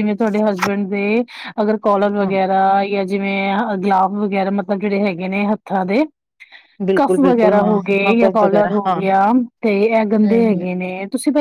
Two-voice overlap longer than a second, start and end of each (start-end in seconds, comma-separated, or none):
7.0-9.0